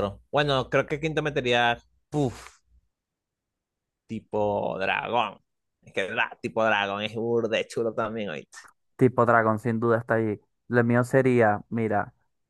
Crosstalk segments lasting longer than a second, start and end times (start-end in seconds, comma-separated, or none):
none